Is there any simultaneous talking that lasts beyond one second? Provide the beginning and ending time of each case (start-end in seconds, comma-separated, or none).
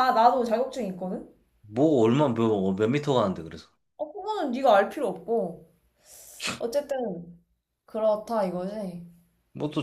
none